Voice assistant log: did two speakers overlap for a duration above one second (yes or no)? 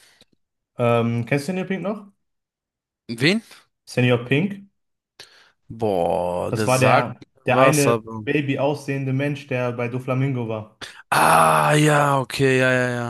yes